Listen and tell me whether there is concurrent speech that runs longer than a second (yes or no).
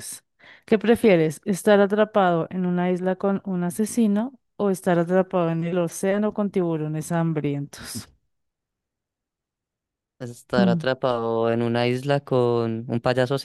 no